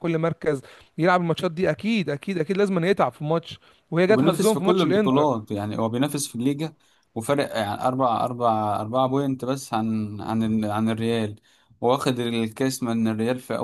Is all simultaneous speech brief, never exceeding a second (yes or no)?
no